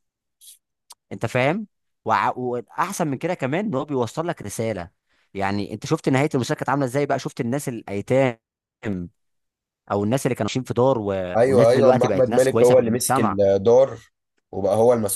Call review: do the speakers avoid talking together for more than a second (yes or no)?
no